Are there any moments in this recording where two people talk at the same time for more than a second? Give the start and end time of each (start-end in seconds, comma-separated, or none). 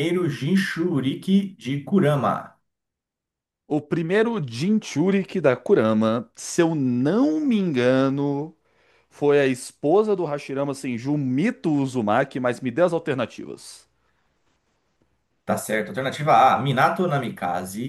none